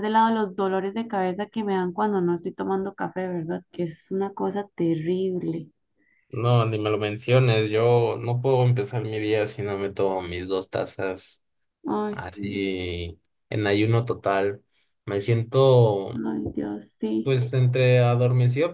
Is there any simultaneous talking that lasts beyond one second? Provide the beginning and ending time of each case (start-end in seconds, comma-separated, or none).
none